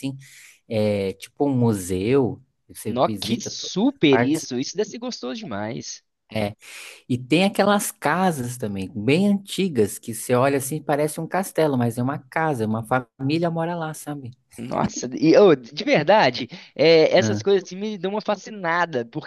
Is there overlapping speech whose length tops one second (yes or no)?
yes